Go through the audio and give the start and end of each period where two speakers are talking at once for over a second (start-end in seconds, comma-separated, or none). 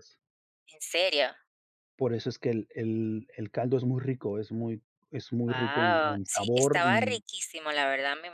5.5-7.2